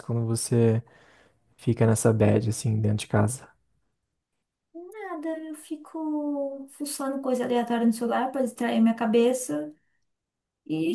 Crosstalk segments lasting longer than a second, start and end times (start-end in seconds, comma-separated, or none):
none